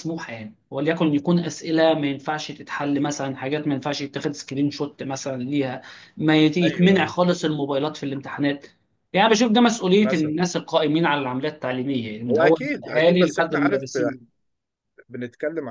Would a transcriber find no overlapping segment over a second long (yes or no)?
no